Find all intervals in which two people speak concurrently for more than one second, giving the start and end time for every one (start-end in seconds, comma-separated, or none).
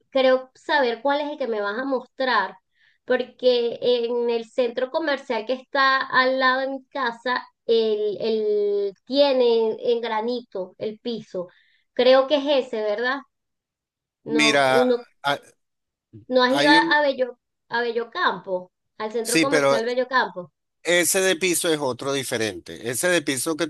none